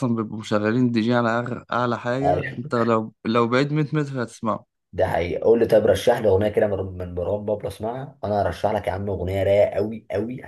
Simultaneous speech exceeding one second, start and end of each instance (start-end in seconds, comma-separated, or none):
none